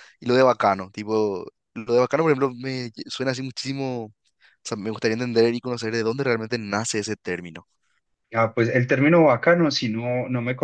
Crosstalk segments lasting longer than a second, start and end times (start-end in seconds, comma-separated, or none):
none